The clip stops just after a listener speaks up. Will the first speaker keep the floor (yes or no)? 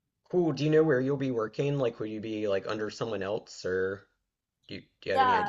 no